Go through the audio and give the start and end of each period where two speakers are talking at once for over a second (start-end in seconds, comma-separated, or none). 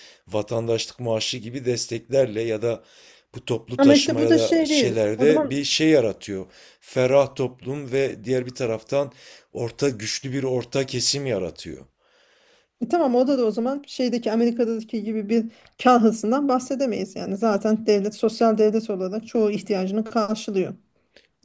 3.8-5.5